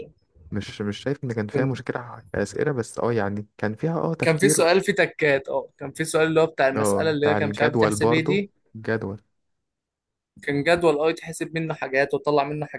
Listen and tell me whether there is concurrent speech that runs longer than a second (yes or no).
yes